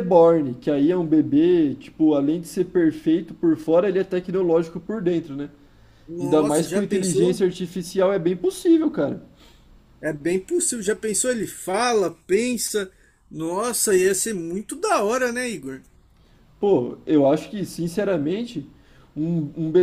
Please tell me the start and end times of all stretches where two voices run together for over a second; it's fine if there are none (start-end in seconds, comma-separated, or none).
6.2-7.5